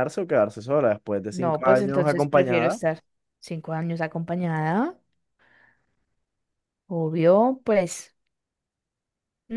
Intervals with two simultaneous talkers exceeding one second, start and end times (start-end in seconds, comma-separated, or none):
1.3-2.8